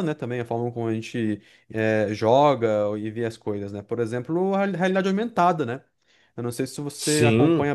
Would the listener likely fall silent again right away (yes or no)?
yes